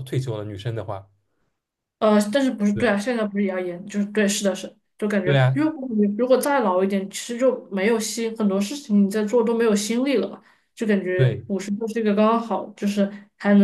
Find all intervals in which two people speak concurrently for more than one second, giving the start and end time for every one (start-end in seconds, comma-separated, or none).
none